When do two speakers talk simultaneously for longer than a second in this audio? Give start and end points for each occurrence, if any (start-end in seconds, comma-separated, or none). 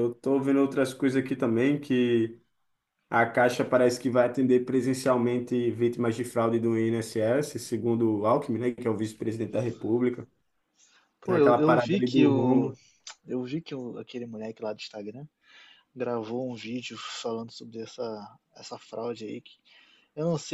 11.2-12.7